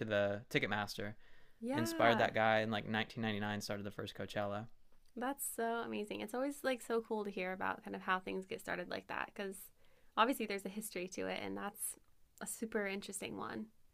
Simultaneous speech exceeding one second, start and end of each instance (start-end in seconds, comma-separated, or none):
none